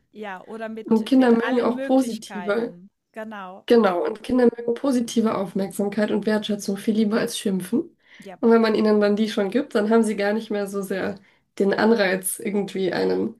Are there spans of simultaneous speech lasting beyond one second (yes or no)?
yes